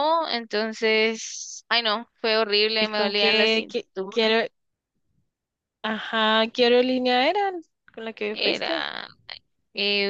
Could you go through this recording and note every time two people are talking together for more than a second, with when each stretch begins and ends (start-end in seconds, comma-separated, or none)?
2.8-4.3